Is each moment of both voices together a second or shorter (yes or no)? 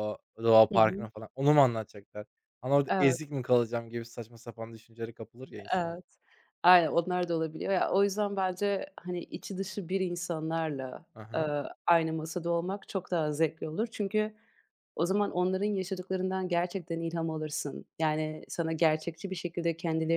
yes